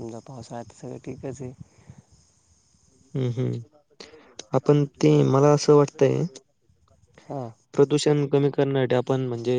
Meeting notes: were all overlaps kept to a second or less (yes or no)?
yes